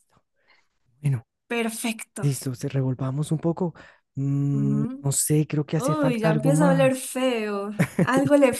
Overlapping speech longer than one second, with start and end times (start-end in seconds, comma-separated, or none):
5.8-7.0